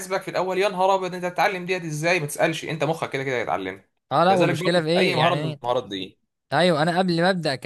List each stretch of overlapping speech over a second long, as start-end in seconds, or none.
4.3-5.6